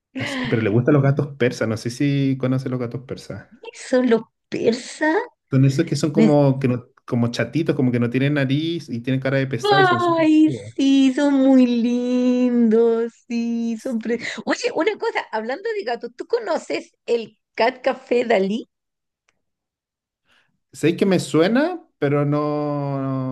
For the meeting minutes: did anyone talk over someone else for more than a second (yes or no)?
no